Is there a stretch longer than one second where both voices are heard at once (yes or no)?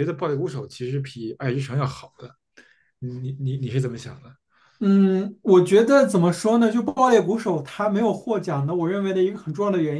no